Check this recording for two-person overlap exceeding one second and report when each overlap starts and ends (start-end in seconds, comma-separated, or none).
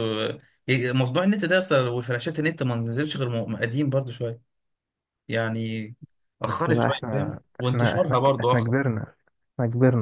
6.5-8.7